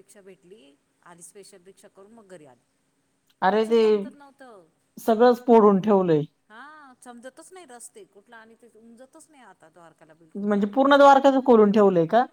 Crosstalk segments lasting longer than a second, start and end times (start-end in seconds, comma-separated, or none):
none